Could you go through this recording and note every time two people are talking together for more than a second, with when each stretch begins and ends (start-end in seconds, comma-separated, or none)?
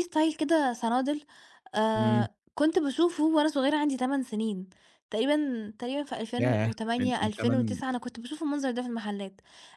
6.4-7.8